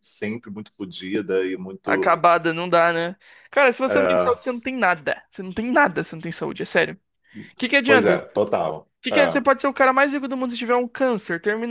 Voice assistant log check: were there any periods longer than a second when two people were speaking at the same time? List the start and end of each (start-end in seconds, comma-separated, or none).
none